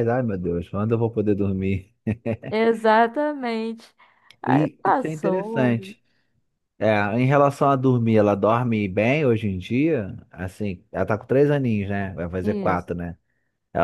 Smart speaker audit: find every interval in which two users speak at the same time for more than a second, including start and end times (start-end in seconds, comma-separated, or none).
4.5-5.9